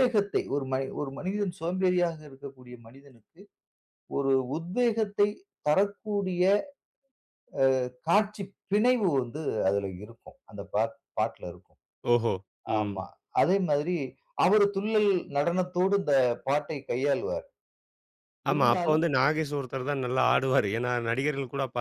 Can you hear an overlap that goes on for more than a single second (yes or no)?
no